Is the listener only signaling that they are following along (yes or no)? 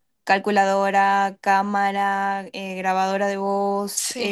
yes